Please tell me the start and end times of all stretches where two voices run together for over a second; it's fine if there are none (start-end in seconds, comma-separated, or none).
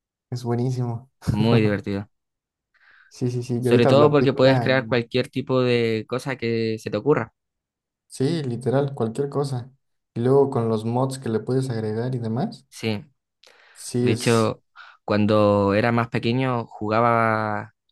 3.6-5.0